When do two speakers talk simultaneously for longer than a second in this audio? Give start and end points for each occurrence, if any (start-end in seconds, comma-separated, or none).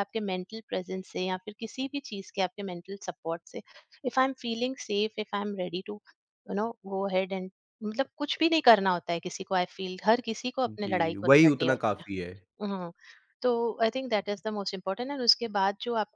10.7-12.2